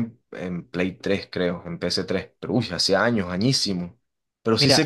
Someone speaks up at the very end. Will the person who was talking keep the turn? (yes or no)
yes